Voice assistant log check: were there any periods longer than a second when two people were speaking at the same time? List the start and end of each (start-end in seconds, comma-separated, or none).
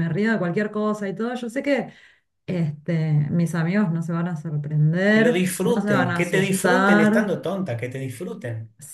5.1-7.3